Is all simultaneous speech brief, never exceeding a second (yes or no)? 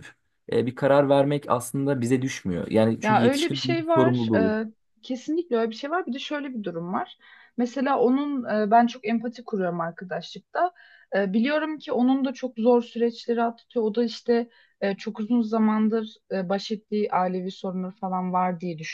no